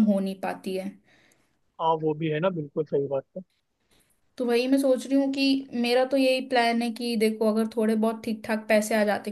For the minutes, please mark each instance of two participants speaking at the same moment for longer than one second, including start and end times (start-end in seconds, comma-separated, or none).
none